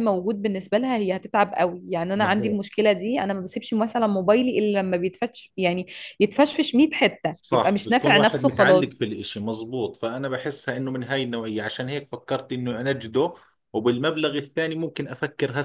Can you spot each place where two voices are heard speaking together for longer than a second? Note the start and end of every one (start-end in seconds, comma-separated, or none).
7.3-9.0